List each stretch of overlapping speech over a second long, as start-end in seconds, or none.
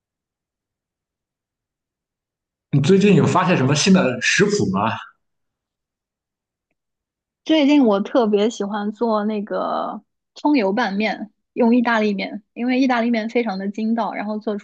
none